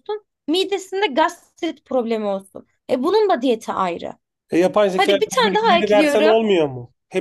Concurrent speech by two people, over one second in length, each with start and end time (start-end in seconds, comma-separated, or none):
4.9-6.4